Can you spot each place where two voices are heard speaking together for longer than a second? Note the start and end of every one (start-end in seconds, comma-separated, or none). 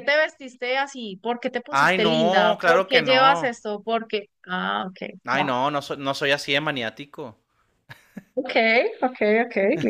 1.7-3.5